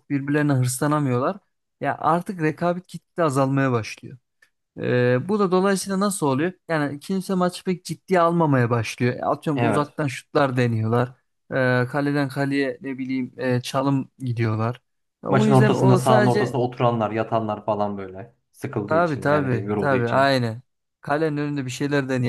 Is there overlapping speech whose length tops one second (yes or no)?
yes